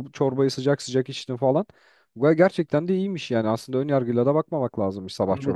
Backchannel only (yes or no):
no